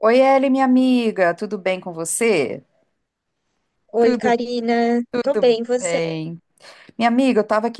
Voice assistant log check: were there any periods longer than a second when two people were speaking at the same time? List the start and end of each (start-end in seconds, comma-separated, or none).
none